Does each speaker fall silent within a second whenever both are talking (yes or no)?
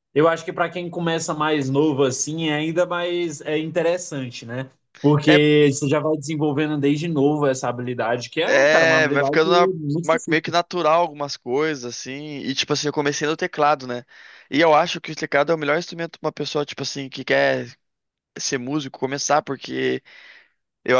no